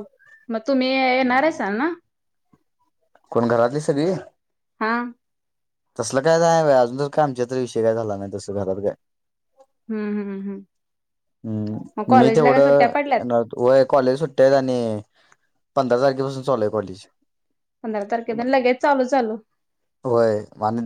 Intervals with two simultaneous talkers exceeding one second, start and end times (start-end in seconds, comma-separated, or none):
11.9-13.2